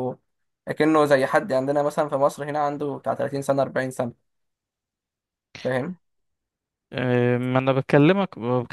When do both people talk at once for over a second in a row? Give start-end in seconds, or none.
none